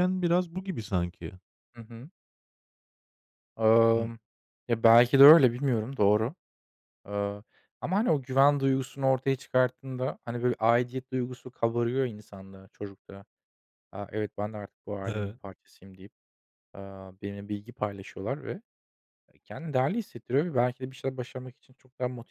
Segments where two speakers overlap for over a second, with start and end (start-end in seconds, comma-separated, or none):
none